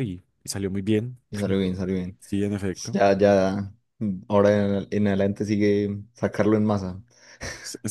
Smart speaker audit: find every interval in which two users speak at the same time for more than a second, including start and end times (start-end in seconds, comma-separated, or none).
none